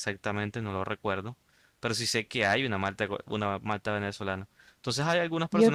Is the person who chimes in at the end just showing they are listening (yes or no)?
yes